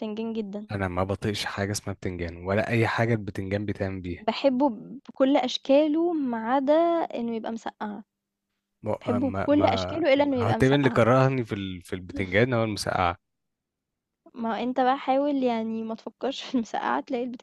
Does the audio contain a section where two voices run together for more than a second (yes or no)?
yes